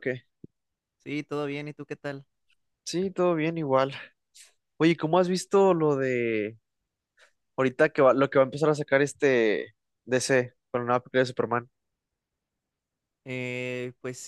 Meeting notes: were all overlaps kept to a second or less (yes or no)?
yes